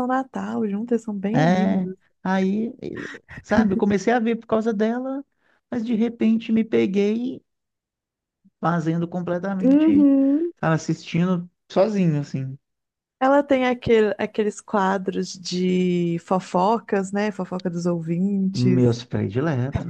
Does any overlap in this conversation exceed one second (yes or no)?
no